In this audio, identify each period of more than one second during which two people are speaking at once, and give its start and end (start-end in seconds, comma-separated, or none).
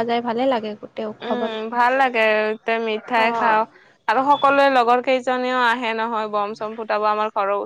none